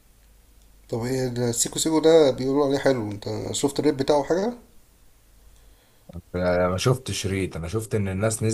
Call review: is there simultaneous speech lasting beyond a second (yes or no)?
no